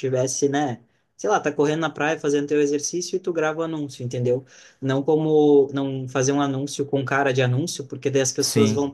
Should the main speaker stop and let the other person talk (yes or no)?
no